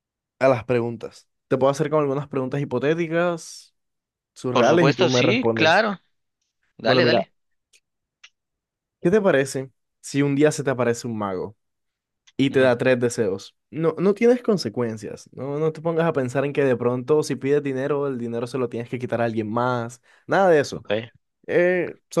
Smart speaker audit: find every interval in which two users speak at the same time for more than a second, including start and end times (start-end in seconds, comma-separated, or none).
4.5-5.8